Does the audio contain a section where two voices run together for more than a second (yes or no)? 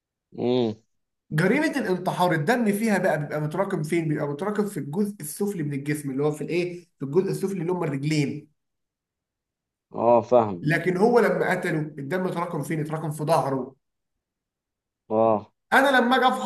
no